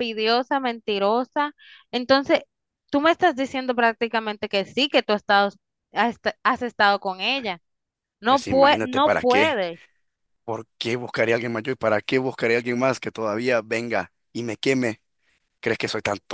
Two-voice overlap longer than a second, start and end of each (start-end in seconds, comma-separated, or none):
8.3-9.6